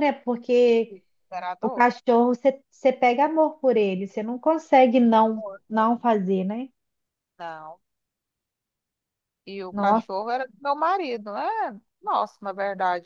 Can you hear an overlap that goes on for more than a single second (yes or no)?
no